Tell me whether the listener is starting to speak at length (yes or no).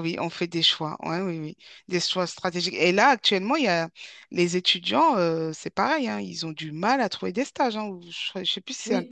yes